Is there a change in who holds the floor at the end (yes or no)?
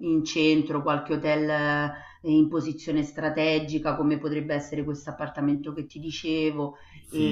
yes